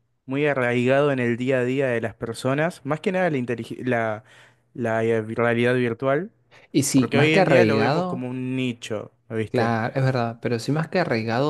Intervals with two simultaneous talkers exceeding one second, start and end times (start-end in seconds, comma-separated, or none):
6.9-8.3